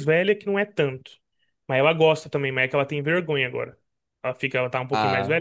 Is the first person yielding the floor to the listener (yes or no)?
no